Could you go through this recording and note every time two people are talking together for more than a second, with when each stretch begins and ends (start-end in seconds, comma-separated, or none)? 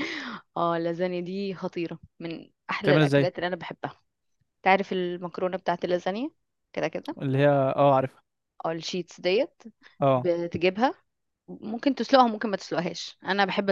none